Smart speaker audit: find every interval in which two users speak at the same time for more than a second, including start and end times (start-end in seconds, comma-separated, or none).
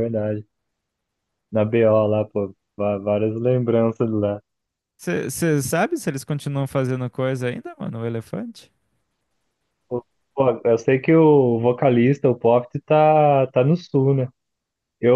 none